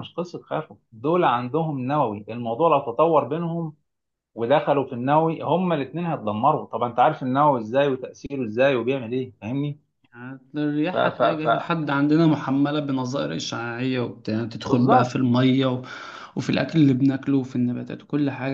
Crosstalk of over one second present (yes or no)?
no